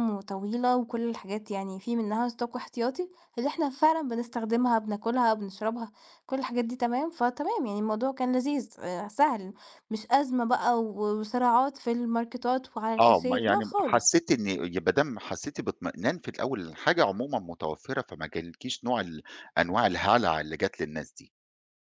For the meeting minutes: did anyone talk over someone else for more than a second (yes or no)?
yes